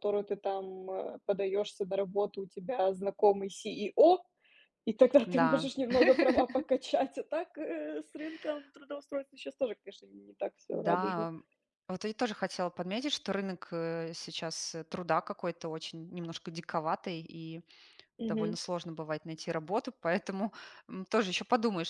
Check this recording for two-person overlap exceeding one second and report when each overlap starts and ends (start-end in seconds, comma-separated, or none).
none